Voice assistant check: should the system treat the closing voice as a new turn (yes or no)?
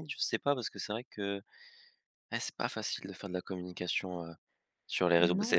yes